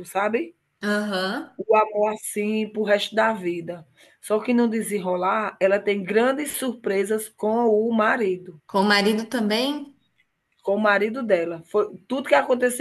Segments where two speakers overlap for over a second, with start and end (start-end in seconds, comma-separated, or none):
none